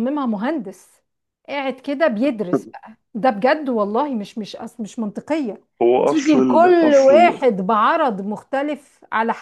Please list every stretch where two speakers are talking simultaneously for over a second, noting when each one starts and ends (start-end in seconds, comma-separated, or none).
6.0-7.4